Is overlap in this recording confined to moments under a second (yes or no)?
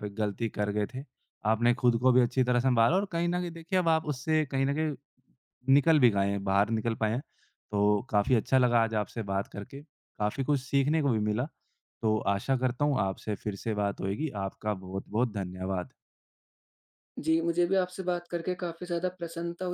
yes